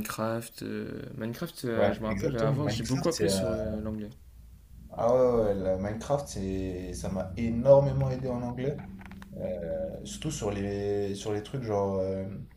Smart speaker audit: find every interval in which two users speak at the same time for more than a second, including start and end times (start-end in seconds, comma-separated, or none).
1.7-3.4